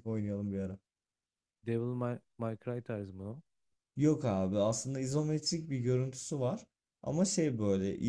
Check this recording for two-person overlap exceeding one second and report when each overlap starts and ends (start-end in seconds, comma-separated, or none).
none